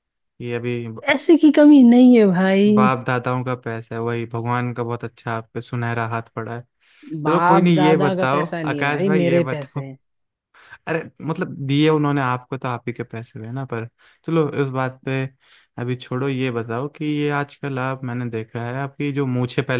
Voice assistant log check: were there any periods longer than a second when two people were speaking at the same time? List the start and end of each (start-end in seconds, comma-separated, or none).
7.3-9.8